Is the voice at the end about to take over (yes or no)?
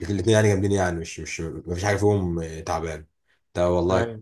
no